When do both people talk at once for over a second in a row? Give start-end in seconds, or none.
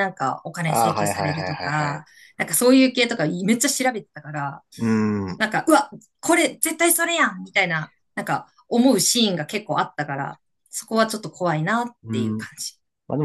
0.7-2.2